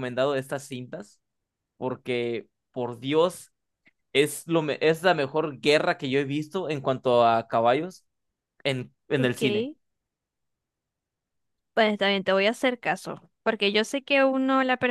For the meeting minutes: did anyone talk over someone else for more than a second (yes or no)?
no